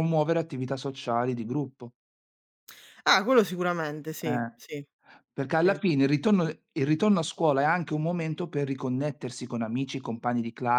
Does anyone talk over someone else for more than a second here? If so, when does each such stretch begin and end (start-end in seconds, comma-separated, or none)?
none